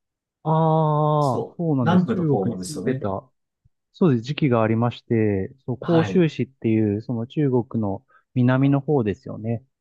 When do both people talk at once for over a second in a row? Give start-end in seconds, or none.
1.2-3.1